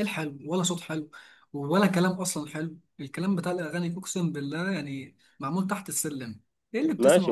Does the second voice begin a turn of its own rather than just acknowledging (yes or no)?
yes